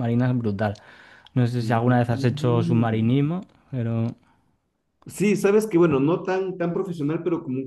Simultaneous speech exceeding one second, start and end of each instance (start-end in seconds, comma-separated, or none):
1.7-3.0